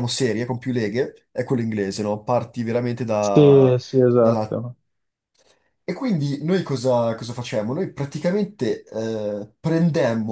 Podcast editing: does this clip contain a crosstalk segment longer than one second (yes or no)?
no